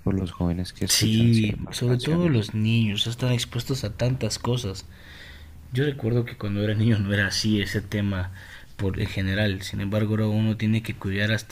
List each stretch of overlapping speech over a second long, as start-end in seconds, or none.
0.9-2.5